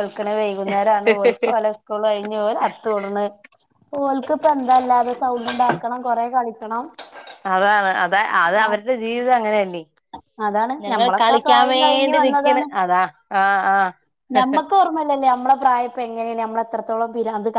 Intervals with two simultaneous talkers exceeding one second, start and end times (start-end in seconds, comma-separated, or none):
10.8-12.7